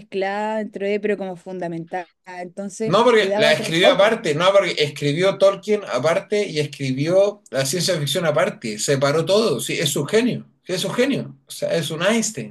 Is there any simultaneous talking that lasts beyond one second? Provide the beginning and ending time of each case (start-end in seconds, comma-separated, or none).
2.8-4.2